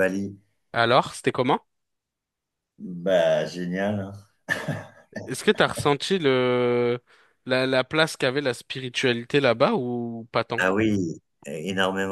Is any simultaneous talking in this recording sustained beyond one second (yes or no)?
no